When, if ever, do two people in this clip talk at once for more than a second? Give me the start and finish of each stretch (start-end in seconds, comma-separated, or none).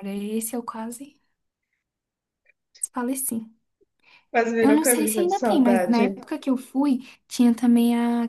4.6-6.0